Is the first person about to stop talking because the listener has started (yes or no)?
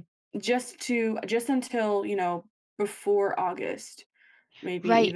yes